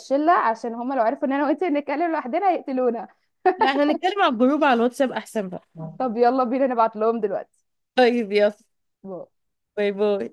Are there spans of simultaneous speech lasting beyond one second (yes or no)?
no